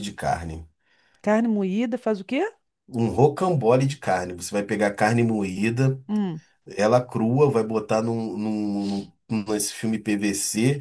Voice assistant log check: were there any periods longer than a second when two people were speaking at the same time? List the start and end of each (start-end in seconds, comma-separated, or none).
none